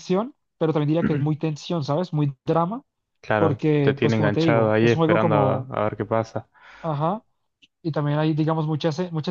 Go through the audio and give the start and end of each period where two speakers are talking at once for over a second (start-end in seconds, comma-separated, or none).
3.4-5.7